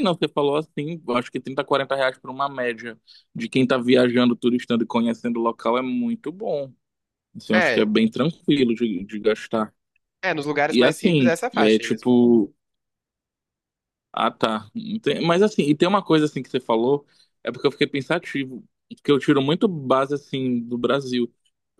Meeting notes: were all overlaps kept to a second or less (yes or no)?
no